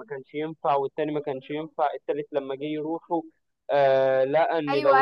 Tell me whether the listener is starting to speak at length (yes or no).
yes